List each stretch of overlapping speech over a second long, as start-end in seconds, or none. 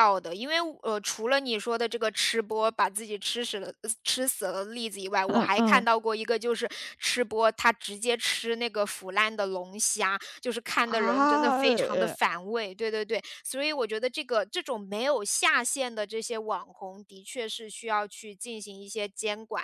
10.8-12.2